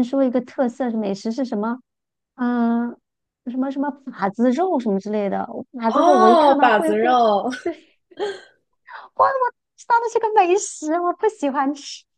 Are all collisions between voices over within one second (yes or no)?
no